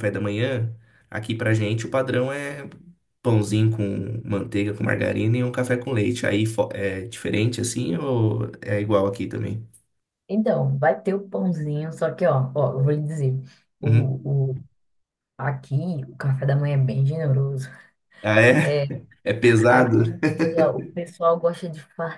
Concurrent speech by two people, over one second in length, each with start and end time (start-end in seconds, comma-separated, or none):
none